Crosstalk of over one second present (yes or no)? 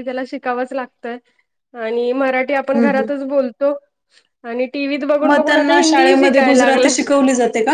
yes